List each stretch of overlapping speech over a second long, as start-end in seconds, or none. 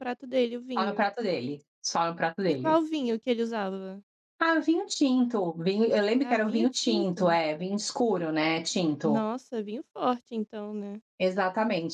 6.2-7.4